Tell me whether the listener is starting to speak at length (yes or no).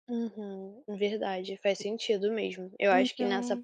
no